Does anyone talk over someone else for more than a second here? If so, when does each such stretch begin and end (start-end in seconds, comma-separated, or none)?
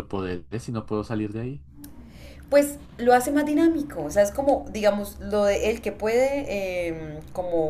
none